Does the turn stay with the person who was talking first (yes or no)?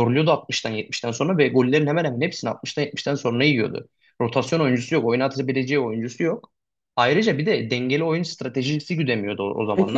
no